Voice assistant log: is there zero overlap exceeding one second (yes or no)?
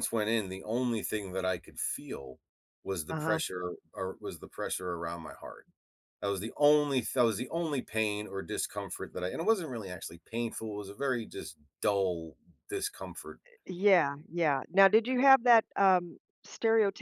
yes